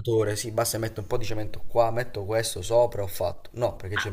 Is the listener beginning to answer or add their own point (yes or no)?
yes